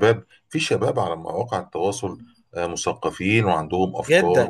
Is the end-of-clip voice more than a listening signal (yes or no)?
yes